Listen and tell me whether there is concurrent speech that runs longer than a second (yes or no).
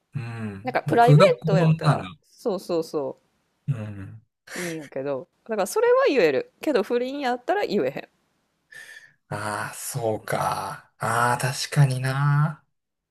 yes